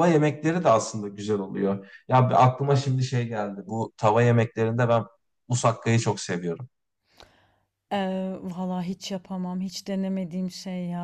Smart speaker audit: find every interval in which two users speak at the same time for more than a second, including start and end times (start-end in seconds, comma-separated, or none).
none